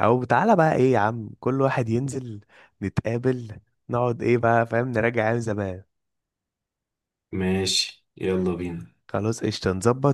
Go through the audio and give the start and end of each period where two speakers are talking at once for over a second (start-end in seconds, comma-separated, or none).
none